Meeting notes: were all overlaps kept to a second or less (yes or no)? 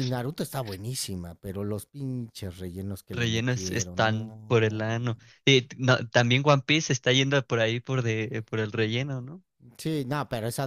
no